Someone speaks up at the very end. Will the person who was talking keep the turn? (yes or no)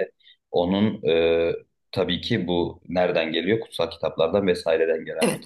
yes